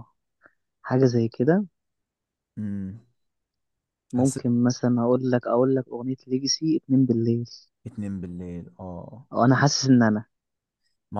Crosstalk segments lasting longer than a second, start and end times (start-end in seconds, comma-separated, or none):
none